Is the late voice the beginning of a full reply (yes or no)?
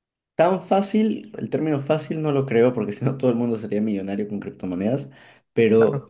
no